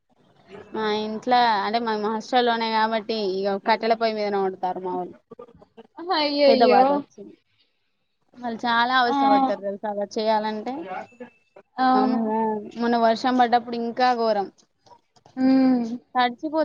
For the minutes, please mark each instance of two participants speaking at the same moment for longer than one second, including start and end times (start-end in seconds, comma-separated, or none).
none